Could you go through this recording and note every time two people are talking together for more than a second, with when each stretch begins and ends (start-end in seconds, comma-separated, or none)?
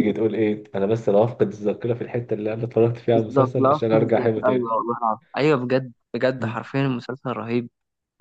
3.1-4.7